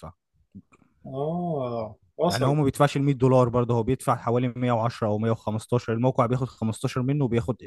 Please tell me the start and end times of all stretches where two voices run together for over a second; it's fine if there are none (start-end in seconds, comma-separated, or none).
none